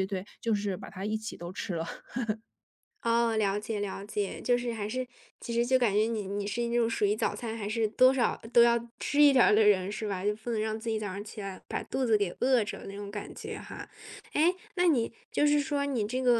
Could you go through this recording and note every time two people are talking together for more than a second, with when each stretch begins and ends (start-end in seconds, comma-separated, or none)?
none